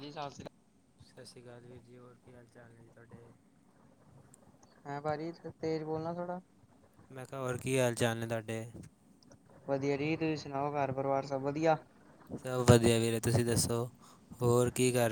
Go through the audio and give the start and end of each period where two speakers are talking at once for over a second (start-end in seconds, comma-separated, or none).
none